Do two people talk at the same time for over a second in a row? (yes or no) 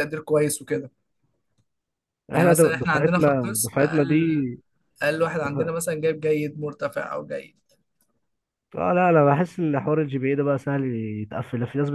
yes